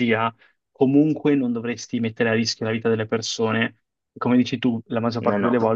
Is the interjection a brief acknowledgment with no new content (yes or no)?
yes